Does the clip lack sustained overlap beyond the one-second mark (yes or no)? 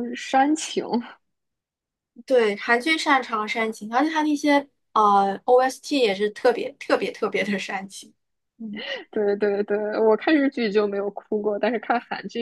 yes